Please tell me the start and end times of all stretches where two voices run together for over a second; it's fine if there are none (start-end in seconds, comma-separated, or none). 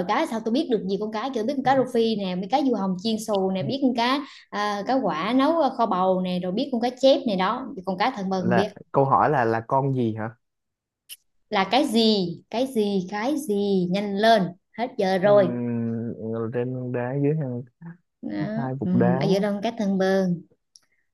none